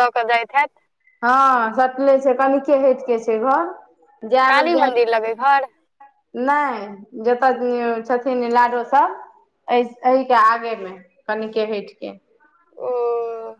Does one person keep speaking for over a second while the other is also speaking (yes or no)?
no